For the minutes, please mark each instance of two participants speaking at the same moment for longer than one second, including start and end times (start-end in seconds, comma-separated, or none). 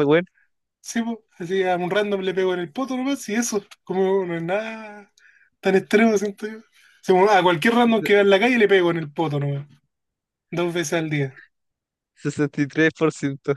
none